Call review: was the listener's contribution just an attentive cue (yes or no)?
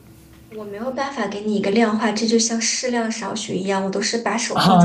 no